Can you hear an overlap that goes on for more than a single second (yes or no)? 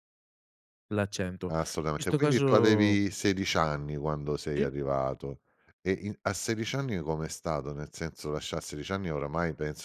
yes